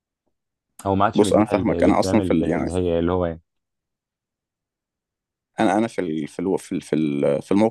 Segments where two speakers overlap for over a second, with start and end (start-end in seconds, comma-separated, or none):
1.1-2.7